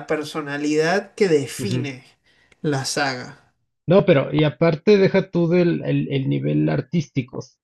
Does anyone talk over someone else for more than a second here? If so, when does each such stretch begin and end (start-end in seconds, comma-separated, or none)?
none